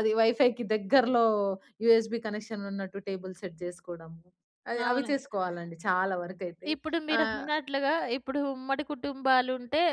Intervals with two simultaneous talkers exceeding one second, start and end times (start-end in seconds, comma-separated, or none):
none